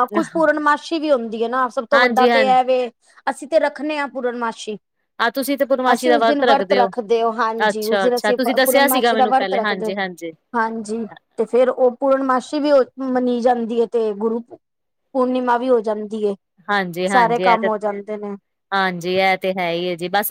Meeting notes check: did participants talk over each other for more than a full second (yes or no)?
yes